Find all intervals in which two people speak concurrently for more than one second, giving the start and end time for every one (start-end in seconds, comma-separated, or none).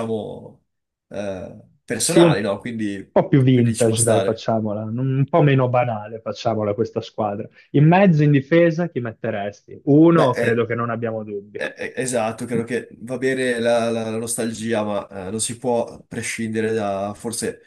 3.1-4.5